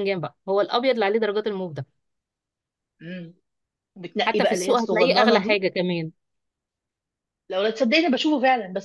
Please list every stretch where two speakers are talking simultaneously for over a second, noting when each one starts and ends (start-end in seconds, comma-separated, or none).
4.2-5.6